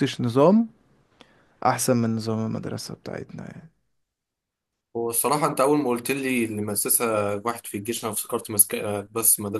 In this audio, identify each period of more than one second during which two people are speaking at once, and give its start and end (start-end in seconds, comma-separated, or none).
none